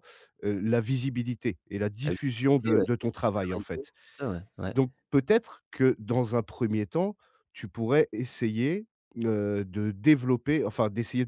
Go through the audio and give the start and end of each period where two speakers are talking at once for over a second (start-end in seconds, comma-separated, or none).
2.0-3.9